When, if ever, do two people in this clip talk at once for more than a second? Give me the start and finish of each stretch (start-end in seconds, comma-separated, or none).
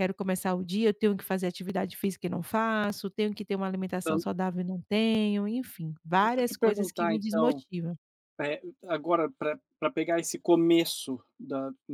6.2-7.6